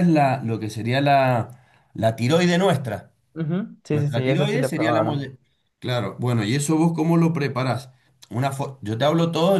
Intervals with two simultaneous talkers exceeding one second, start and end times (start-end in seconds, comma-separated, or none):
3.9-5.3